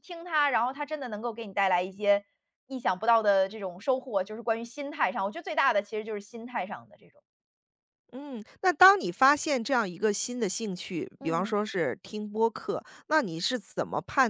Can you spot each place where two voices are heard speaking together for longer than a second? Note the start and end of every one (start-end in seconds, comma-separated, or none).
none